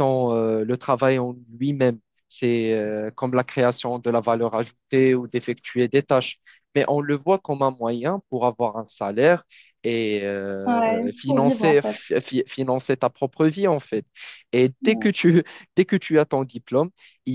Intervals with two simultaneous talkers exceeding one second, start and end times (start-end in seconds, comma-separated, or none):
10.7-12.0